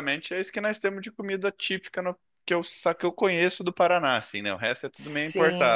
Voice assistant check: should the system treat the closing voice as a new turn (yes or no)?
yes